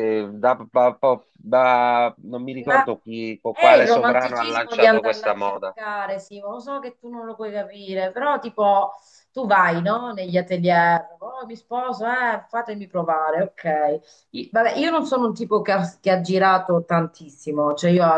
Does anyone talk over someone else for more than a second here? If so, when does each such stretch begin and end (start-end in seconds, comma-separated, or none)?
3.5-5.8